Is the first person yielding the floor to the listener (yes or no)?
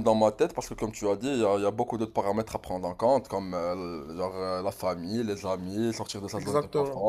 no